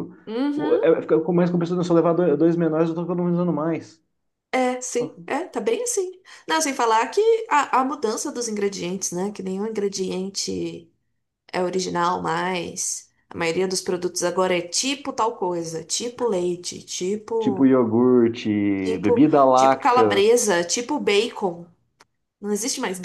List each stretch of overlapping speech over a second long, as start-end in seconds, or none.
18.8-20.2